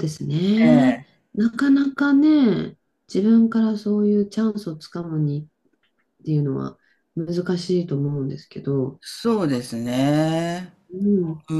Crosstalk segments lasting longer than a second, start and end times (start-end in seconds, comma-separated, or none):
none